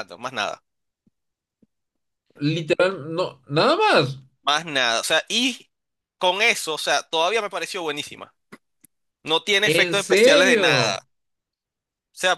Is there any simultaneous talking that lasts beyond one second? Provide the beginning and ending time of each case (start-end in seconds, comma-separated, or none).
9.6-11.0